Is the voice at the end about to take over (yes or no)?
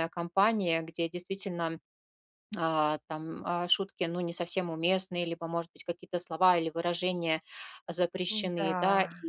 no